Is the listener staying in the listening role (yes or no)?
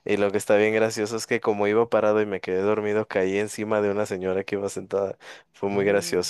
yes